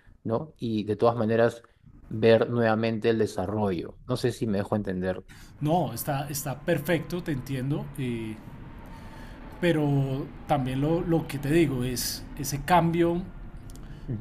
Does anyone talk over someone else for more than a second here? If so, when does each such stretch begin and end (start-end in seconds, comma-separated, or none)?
none